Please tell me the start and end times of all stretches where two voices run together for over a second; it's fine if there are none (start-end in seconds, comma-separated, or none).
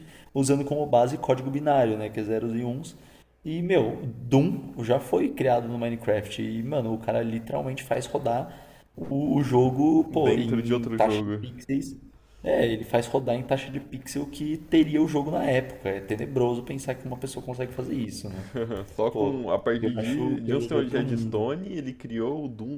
10.1-11.5, 19.1-21.5